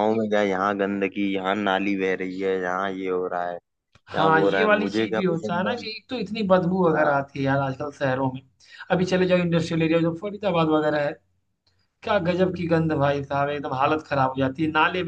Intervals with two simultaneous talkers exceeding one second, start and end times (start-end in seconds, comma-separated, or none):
4.2-5.7